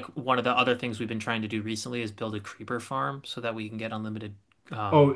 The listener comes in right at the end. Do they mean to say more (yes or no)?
yes